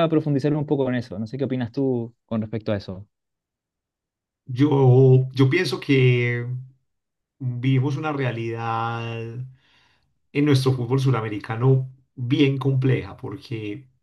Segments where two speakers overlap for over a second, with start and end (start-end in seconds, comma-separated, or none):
none